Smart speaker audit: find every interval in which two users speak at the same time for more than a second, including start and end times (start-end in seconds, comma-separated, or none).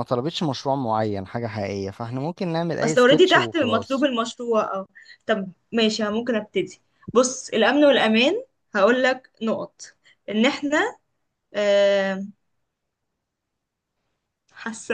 2.8-4.1